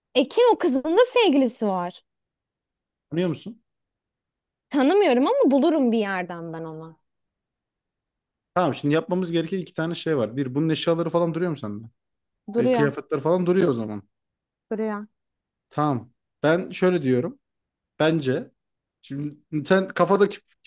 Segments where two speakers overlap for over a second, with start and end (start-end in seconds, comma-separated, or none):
none